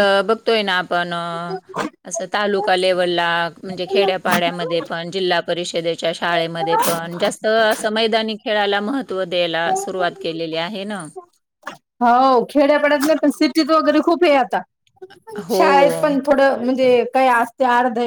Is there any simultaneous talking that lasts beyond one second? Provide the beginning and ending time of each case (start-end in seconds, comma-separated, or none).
none